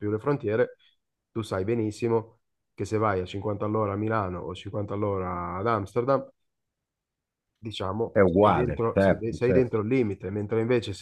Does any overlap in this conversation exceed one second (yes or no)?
yes